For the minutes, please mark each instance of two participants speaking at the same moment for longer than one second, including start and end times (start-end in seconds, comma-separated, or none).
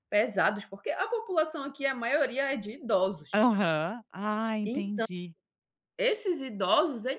none